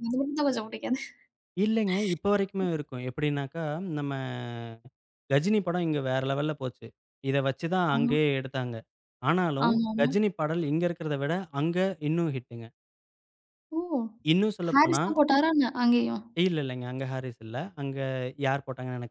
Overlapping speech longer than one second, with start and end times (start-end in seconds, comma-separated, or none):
none